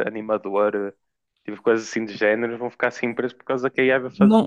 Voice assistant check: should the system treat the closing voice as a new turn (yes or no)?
yes